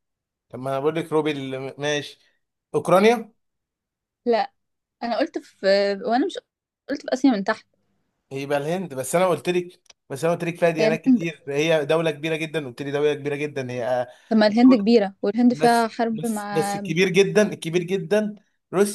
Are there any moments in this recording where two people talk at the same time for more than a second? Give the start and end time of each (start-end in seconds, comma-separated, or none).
15.5-16.8